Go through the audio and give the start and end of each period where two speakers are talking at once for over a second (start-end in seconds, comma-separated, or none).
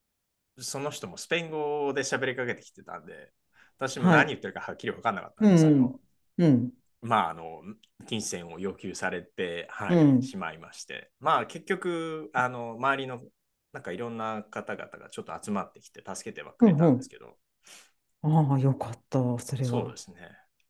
none